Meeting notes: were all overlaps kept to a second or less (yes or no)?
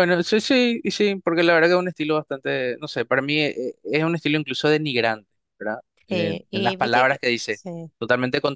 no